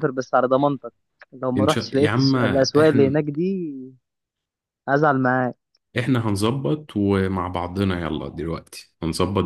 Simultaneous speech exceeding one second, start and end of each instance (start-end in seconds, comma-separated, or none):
1.6-3.2